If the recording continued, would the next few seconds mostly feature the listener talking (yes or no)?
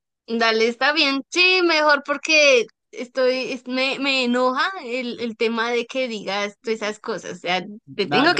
yes